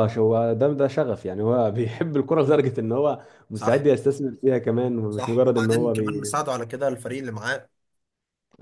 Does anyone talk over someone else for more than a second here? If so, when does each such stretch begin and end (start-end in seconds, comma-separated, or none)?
5.1-6.4